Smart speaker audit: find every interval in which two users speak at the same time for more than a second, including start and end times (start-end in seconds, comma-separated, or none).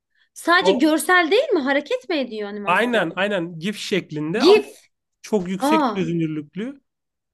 none